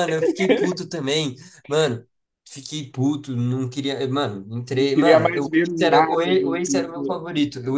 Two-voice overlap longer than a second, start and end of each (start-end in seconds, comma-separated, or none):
4.7-7.2